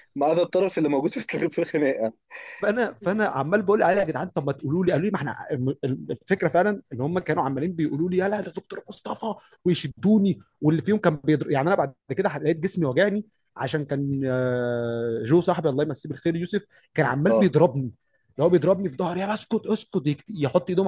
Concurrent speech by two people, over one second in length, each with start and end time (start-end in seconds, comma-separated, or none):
none